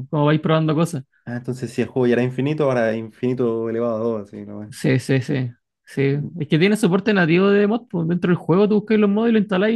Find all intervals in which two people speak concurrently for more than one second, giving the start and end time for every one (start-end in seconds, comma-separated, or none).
none